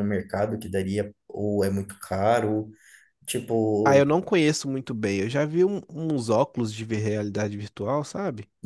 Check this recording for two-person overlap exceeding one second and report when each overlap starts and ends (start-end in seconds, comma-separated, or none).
none